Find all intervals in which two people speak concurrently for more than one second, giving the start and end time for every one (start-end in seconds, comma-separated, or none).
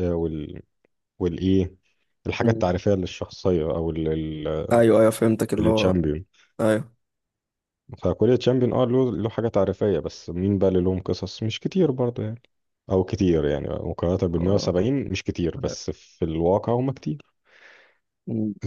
none